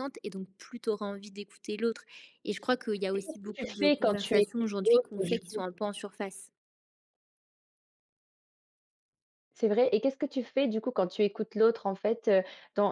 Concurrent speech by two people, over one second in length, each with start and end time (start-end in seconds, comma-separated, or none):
3.1-5.6